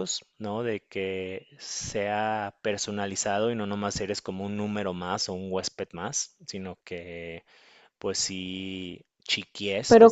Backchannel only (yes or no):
no